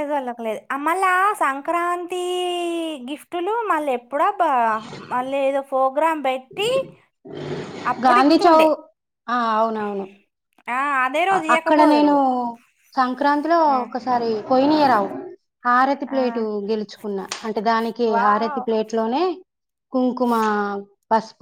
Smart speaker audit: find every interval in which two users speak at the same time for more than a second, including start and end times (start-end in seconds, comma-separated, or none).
none